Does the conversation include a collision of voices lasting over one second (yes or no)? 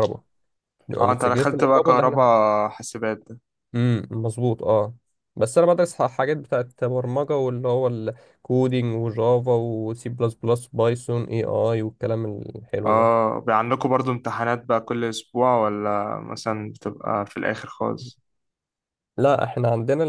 yes